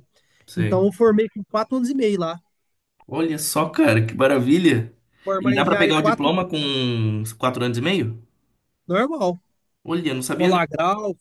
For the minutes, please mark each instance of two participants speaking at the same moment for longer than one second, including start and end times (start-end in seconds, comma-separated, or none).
5.4-6.7